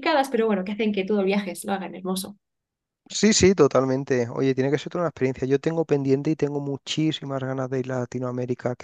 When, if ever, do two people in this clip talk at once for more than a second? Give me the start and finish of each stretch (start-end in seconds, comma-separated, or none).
none